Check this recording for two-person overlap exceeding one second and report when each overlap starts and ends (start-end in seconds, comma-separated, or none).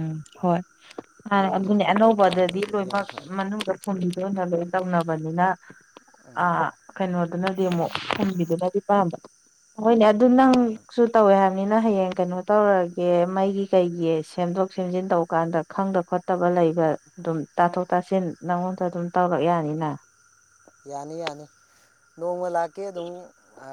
1.6-3.3